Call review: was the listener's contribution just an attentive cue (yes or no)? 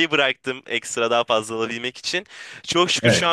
yes